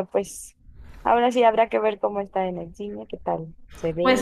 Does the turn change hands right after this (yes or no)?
yes